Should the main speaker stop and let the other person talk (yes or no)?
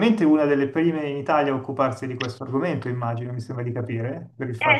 yes